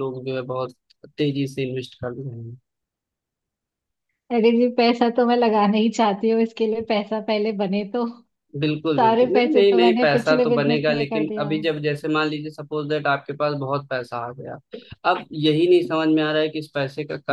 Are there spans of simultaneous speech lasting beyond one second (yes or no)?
yes